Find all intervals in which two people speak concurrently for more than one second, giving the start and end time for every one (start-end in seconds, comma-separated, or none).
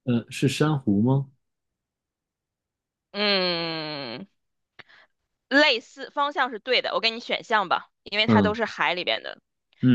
none